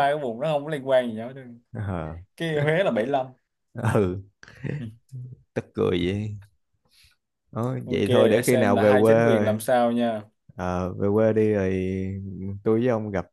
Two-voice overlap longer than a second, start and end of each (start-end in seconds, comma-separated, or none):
7.8-9.6